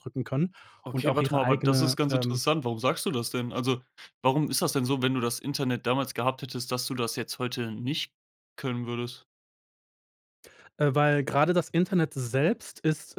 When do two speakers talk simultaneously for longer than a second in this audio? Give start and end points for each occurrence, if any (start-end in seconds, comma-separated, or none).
0.9-2.4